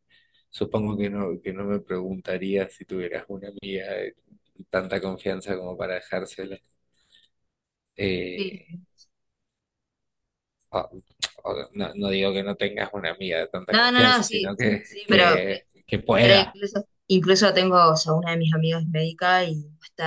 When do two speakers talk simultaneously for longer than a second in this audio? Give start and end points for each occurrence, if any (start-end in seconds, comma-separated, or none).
13.7-15.4